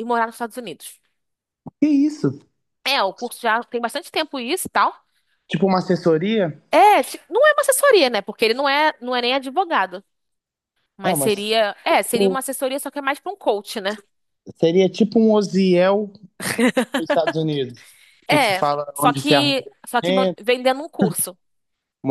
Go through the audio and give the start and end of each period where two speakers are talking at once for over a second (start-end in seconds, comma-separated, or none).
18.3-20.4